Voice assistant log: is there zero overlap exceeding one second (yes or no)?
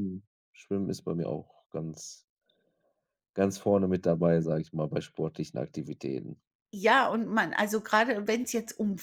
yes